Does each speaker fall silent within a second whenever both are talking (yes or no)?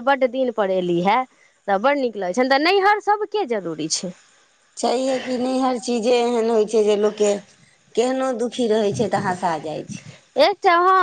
yes